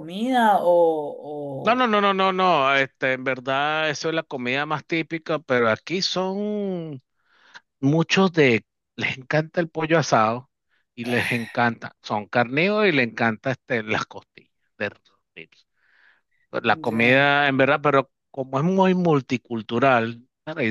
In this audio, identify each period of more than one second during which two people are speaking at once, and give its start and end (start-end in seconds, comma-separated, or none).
none